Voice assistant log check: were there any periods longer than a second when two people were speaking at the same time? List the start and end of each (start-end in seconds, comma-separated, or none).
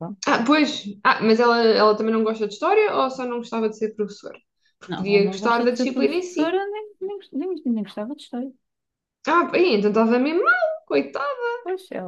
4.9-6.6